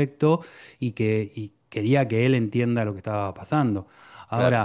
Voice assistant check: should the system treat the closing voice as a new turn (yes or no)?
no